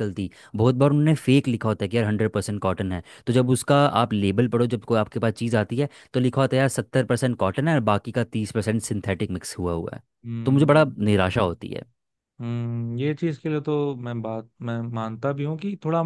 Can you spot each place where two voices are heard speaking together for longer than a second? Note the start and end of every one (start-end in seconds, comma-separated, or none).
none